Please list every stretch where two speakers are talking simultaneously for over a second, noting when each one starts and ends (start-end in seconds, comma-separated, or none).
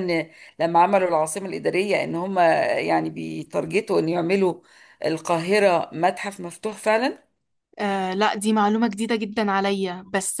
none